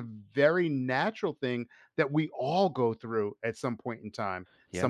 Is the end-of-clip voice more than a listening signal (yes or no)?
no